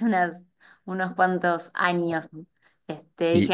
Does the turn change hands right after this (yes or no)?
no